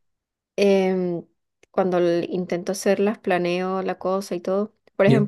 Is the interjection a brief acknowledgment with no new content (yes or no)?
yes